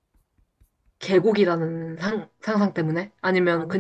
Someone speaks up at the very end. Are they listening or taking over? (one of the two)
taking over